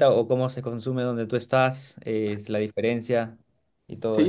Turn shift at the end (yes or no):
yes